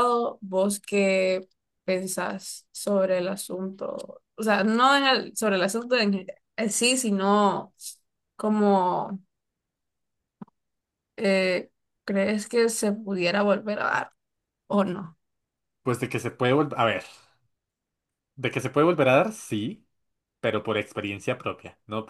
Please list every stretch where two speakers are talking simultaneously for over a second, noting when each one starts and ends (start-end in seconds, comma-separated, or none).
none